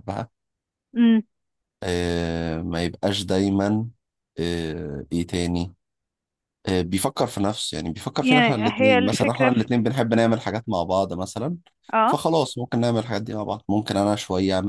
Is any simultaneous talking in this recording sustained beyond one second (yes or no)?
yes